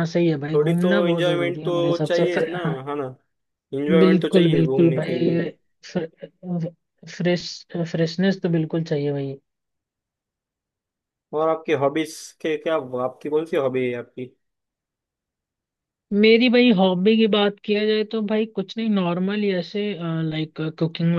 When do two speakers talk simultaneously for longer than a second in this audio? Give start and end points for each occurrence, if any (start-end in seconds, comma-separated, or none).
0.5-2.5, 4.0-5.4